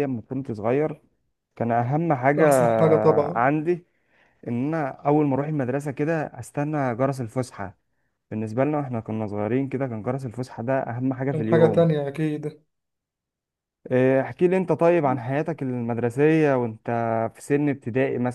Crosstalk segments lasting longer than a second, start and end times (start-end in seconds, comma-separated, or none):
none